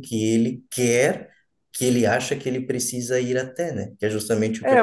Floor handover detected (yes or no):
yes